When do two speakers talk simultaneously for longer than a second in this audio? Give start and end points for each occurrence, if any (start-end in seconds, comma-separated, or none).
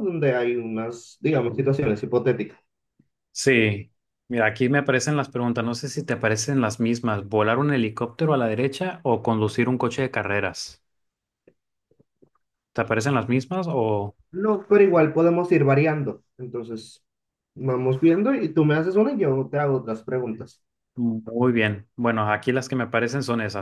none